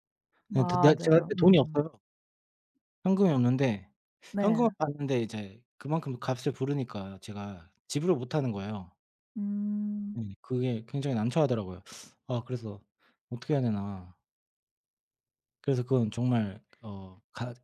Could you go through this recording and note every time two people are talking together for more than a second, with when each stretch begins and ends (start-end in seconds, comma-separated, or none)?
0.5-1.8